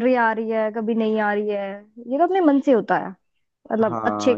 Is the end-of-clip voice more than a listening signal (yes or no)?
yes